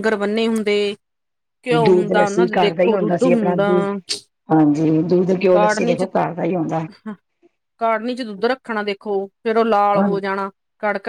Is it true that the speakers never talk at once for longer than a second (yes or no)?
no